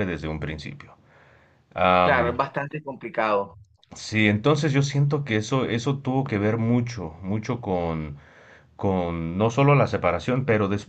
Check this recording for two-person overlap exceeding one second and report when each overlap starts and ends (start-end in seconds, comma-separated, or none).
none